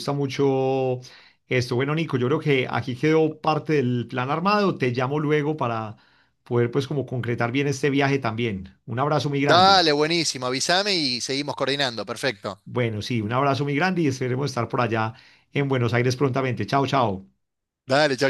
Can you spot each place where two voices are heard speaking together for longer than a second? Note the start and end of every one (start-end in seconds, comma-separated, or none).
none